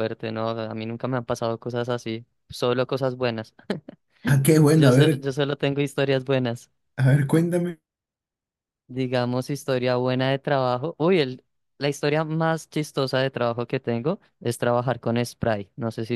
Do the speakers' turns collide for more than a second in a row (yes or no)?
no